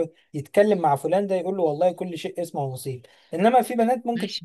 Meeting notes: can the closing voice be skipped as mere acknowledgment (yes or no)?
no